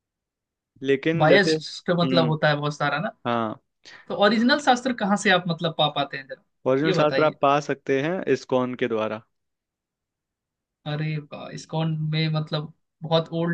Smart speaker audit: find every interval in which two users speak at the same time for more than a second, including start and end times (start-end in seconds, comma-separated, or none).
1.1-2.4